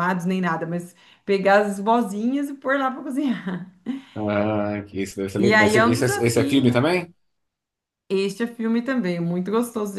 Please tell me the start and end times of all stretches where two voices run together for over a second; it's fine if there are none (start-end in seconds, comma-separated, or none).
5.4-6.9